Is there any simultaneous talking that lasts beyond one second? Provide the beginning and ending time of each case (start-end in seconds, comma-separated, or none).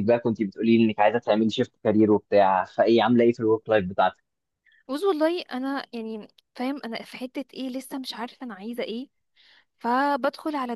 none